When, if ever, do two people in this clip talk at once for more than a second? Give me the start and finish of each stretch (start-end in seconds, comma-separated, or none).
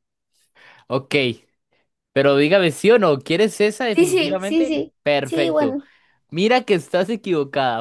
3.9-5.8